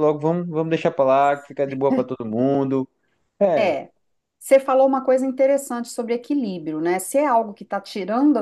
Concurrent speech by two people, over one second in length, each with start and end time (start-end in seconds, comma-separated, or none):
none